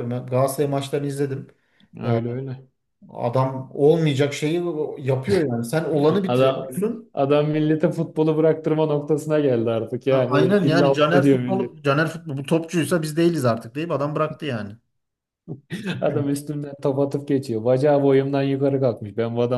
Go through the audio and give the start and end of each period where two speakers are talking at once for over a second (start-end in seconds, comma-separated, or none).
10.1-11.9